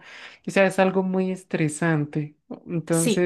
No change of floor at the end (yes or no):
no